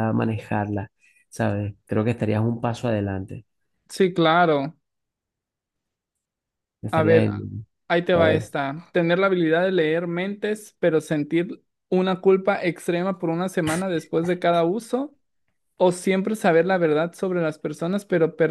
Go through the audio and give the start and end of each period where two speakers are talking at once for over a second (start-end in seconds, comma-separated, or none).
none